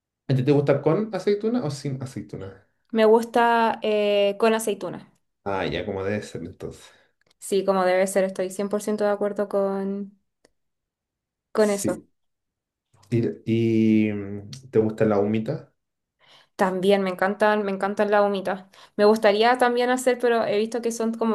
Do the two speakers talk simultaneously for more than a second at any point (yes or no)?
no